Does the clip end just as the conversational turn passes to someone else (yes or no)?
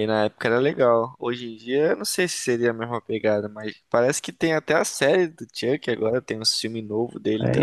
no